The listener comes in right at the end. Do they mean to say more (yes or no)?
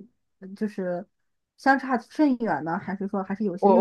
yes